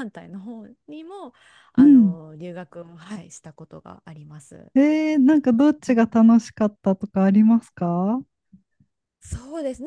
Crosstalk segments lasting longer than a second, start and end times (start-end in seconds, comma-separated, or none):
none